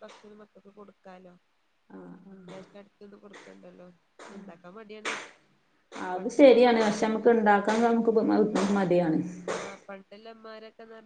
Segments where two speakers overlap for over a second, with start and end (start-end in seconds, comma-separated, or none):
none